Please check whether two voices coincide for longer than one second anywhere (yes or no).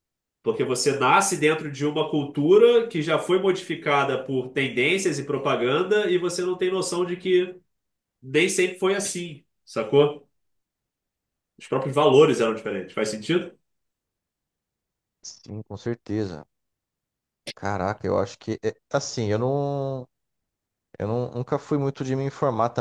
no